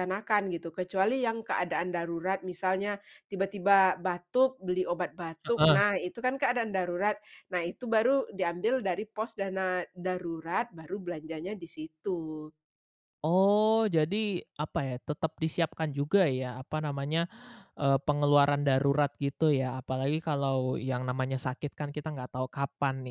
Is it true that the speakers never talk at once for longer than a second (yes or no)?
yes